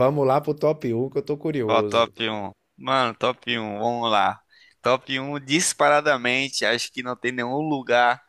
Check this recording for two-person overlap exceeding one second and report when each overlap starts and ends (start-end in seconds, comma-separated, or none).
none